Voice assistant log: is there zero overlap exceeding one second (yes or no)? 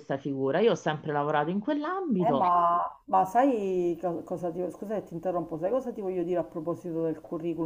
yes